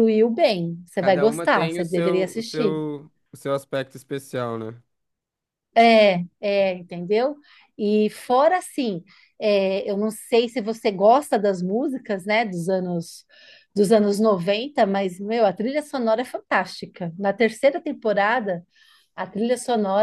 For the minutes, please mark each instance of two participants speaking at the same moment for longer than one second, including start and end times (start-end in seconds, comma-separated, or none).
1.0-2.8